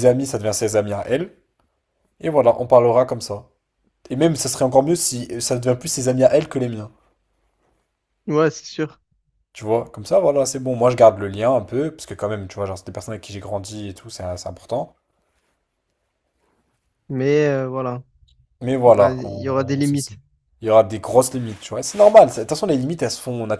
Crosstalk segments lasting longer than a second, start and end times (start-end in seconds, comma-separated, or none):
18.9-20.2